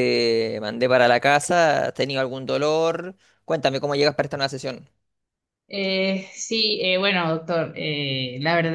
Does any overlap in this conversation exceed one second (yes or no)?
no